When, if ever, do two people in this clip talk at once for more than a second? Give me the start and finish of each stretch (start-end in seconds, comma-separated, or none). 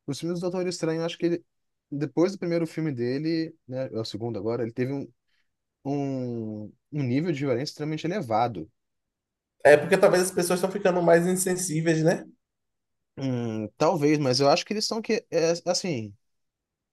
none